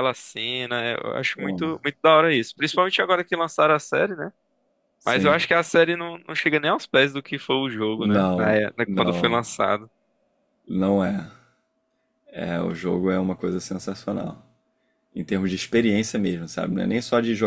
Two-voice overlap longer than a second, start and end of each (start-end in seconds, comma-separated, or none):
8.0-9.4